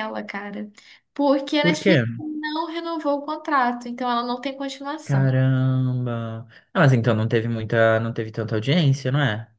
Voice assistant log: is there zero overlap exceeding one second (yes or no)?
yes